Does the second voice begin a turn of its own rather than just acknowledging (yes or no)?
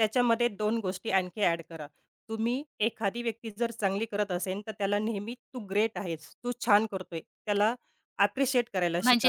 yes